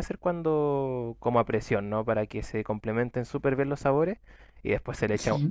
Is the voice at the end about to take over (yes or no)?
no